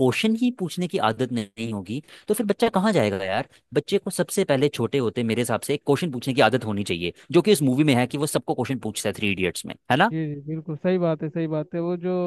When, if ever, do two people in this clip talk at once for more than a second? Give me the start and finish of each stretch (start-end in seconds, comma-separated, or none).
none